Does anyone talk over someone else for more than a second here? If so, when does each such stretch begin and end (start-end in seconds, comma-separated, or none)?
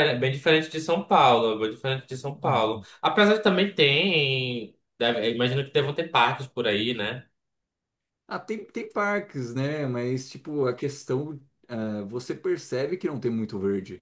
none